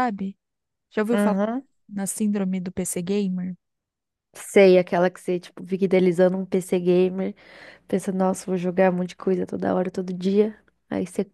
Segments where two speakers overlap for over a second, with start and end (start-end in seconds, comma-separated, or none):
none